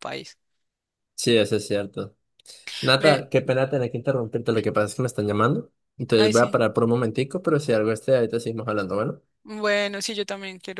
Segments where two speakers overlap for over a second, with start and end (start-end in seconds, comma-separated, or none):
none